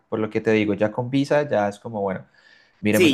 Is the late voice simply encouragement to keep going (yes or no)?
no